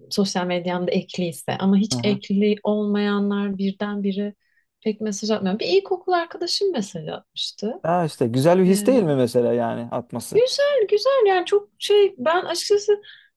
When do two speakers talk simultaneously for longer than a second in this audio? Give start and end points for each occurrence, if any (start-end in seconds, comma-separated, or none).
none